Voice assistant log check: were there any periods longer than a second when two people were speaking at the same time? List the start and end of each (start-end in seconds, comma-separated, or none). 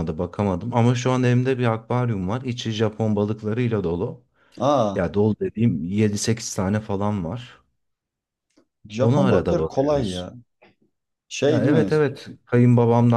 9.0-10.3